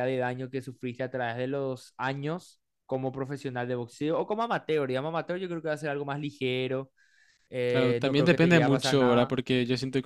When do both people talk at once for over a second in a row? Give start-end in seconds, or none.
7.7-9.3